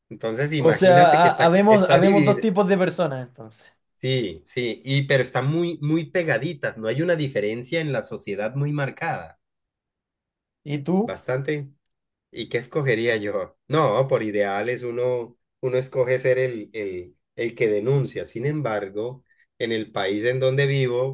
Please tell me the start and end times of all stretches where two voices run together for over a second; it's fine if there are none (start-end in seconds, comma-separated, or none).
0.6-2.4